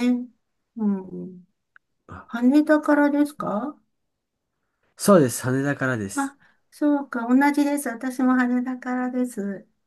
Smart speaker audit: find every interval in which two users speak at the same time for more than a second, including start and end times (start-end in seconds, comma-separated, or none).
none